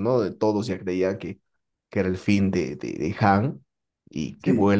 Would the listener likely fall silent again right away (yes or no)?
yes